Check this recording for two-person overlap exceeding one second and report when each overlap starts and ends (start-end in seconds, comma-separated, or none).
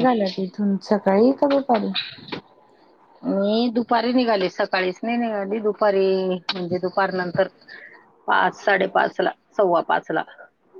none